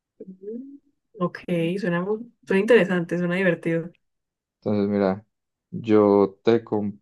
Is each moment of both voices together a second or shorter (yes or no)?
yes